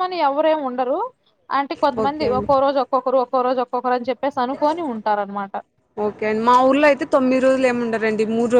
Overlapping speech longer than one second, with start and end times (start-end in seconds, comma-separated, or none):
none